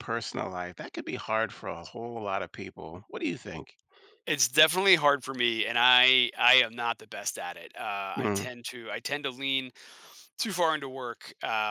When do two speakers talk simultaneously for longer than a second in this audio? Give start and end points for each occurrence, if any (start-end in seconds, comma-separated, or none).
none